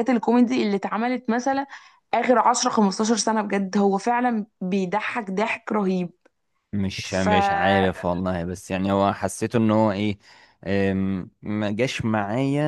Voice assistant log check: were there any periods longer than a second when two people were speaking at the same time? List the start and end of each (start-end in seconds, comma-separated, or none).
none